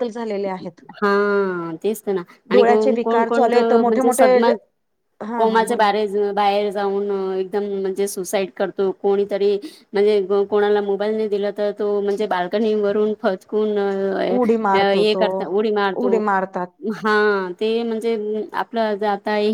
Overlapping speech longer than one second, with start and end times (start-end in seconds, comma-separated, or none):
2.5-4.3